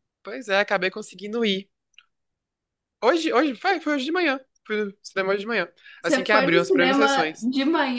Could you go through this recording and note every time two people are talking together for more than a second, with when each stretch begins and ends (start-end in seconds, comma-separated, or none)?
6.0-7.5